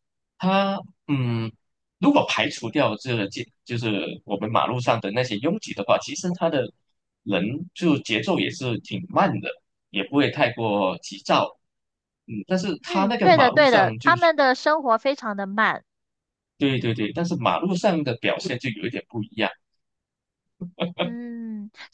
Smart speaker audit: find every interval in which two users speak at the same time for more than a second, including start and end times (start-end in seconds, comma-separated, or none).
12.8-14.3